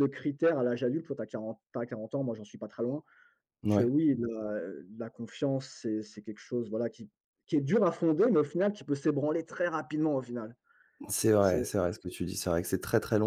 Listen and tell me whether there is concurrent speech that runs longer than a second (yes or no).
no